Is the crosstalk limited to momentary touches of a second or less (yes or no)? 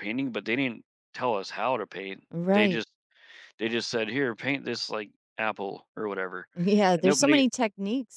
yes